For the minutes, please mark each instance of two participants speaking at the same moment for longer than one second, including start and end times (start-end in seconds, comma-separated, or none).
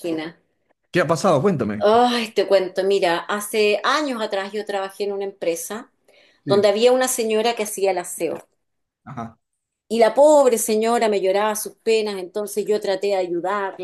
none